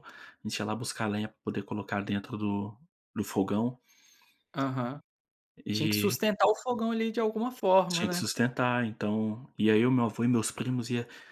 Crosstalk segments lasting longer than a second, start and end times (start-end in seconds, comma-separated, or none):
none